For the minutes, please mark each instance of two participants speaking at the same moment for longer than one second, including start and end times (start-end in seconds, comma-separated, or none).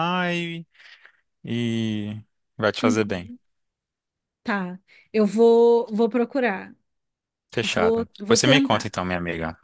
7.6-9.0